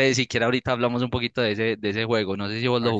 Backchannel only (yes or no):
no